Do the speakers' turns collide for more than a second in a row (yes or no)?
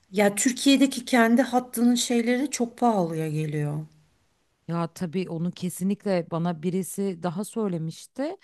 no